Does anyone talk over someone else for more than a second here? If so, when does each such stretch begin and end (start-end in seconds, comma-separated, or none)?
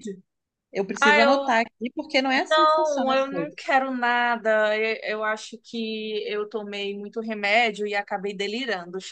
2.5-3.7